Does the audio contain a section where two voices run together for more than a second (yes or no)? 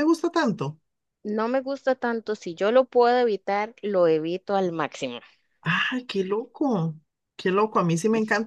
no